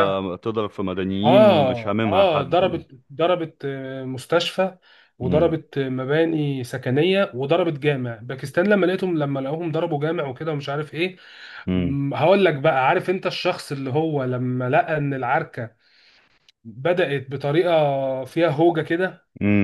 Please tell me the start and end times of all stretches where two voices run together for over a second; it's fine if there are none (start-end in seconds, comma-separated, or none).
1.2-2.8